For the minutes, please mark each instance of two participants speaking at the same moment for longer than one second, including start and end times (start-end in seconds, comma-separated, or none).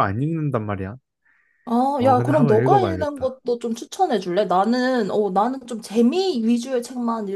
2.0-3.4